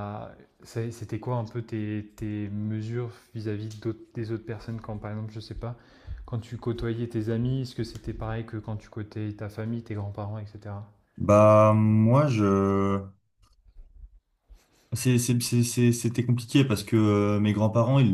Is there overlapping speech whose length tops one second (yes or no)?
no